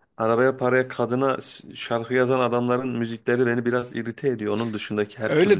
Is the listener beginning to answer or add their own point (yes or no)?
yes